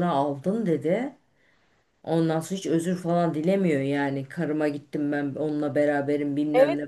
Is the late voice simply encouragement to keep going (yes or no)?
no